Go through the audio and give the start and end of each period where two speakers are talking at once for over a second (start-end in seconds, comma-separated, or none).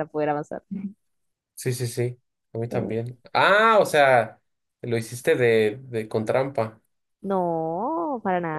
none